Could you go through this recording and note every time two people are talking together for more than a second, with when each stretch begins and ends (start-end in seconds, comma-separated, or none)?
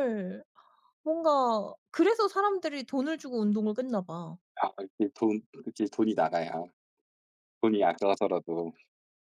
none